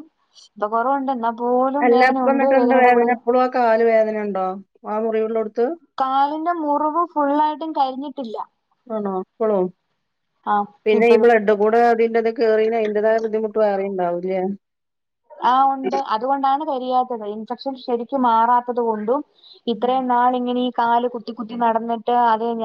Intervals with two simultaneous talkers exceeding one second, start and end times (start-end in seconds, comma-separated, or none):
none